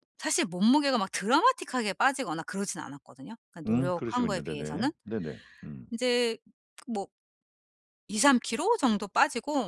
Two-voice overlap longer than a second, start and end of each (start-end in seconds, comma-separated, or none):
3.7-4.9